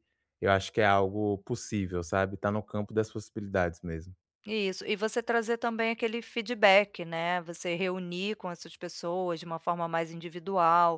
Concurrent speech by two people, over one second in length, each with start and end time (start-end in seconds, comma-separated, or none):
none